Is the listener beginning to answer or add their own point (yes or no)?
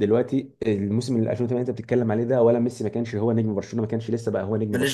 no